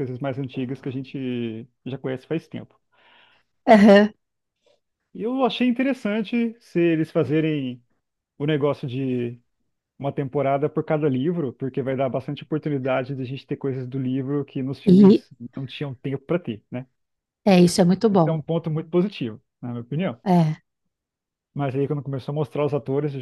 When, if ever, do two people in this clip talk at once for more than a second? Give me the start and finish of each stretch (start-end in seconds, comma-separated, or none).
none